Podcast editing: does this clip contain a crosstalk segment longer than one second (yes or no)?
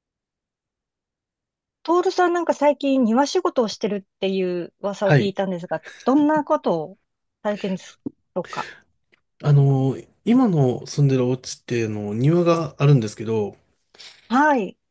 no